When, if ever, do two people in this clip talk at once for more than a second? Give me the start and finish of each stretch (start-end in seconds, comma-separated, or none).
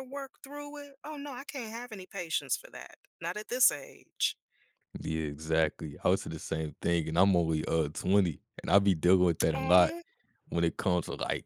none